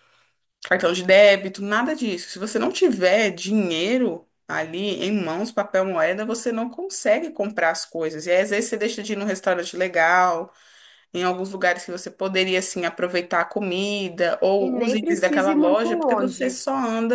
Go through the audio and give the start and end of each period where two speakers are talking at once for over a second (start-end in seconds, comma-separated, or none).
14.6-16.6